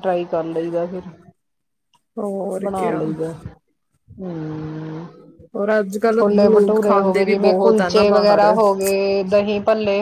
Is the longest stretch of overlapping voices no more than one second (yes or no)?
no